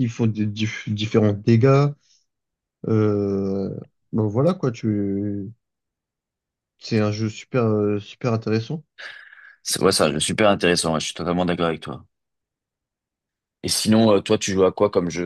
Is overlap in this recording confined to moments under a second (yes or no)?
yes